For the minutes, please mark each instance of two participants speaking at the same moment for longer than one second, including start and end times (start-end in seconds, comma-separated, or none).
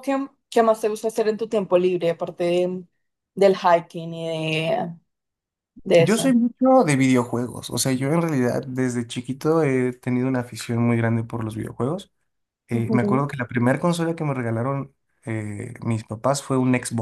none